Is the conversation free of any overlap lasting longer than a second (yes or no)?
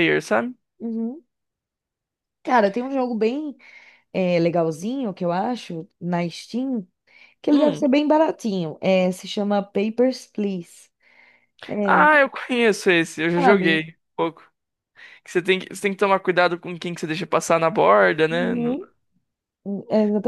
yes